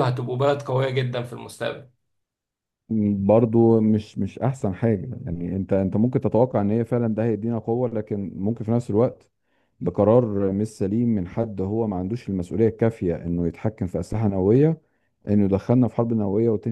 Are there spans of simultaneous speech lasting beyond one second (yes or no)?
no